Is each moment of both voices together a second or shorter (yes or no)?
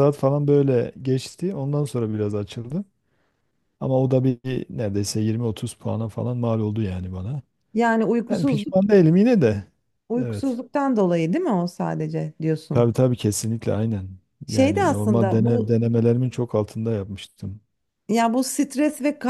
no